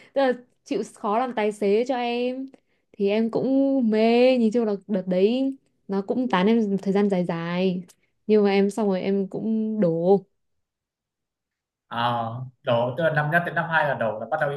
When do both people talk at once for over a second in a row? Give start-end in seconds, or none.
none